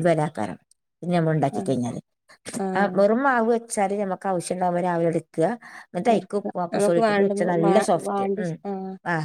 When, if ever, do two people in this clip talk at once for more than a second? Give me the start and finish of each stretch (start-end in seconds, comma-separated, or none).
6.1-8.5